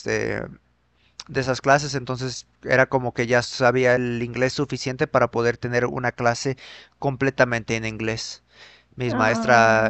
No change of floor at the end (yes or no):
yes